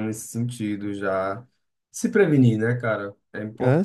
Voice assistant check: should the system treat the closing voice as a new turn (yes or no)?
yes